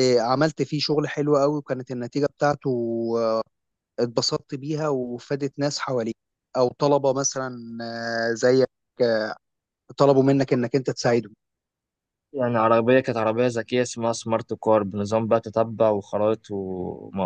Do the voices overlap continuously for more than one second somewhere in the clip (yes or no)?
no